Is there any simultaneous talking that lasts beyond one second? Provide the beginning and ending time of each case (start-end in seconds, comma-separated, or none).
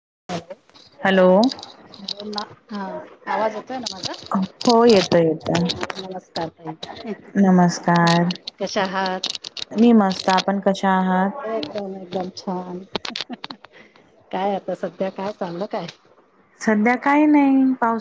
none